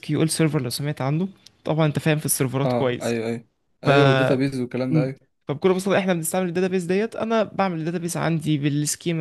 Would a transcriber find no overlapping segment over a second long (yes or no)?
yes